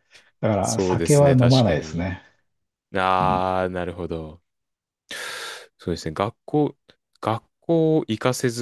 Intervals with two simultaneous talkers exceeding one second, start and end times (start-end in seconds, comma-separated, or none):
0.6-2.2